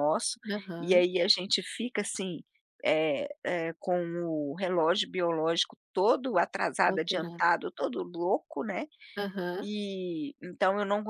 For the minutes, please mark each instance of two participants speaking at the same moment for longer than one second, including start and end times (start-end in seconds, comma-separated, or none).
none